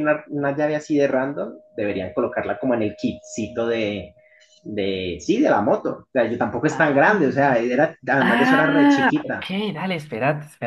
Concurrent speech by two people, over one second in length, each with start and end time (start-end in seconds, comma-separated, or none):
8.2-9.5